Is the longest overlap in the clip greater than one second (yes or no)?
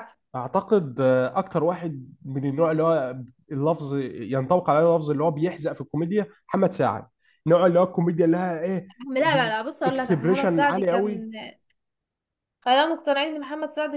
yes